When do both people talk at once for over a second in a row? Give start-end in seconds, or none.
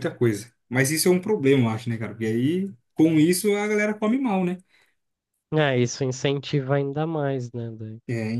none